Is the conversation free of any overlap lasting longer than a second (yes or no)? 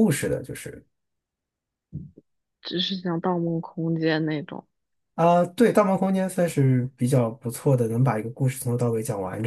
yes